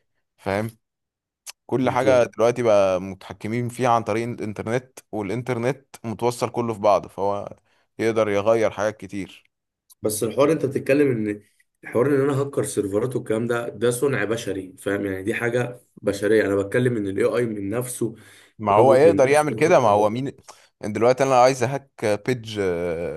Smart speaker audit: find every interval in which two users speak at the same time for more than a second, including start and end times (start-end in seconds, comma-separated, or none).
18.8-20.0